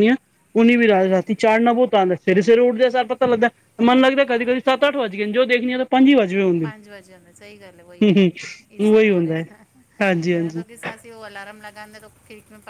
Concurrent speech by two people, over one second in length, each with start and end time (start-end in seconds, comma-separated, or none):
8.0-9.4